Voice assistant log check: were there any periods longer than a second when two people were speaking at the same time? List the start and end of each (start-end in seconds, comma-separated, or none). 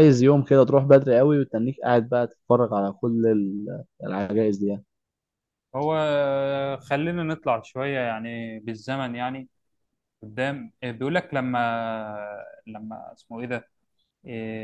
none